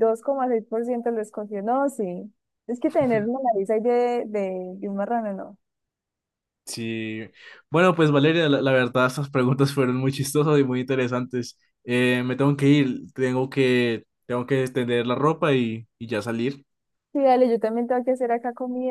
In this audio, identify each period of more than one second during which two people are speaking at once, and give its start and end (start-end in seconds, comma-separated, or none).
none